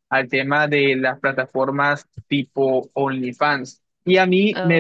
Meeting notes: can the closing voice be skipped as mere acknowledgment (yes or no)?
yes